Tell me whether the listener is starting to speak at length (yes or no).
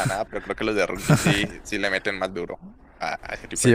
yes